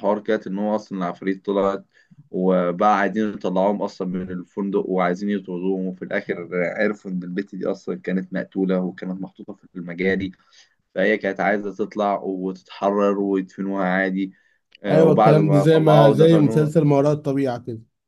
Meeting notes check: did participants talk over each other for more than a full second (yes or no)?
yes